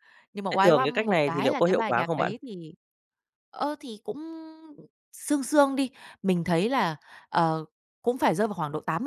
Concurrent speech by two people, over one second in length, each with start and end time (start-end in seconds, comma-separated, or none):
0.5-2.3